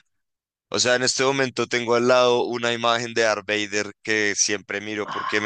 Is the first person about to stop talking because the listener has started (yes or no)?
no